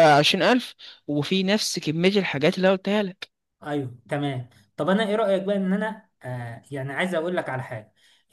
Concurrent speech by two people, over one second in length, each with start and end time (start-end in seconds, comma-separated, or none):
none